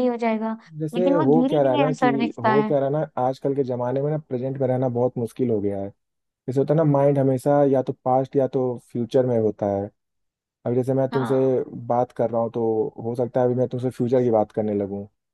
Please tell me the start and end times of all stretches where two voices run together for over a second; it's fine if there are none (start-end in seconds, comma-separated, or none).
0.9-2.7